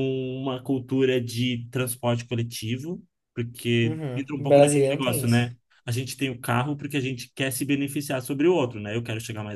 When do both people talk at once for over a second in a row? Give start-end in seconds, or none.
3.8-5.4